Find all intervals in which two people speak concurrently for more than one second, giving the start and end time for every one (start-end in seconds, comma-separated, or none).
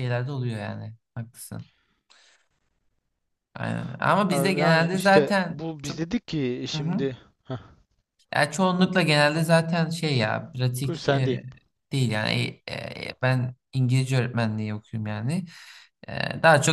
4.3-6.0